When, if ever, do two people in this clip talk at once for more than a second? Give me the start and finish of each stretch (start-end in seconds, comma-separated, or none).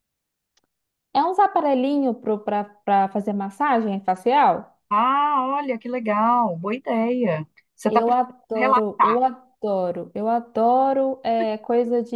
7.9-9.2